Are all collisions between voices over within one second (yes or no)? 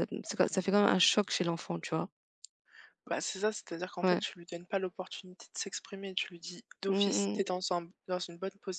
yes